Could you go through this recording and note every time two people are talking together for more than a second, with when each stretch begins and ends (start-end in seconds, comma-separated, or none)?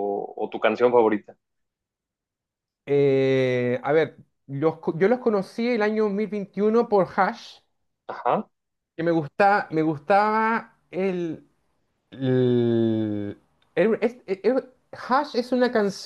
none